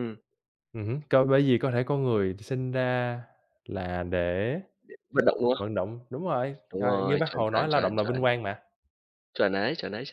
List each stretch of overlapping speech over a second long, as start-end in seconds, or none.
6.7-8.3